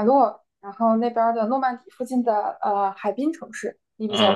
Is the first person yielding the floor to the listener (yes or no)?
yes